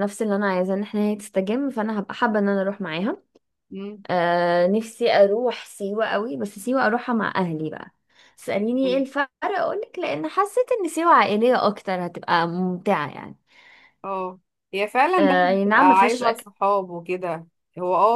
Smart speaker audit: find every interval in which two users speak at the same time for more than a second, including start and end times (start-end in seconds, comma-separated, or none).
15.2-16.5